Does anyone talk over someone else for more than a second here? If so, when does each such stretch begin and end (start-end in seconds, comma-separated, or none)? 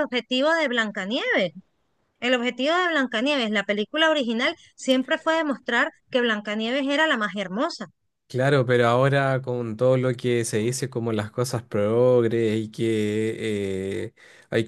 none